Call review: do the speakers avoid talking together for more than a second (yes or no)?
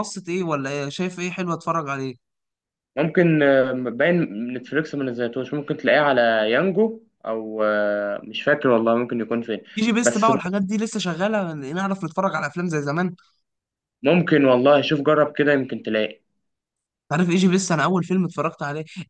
yes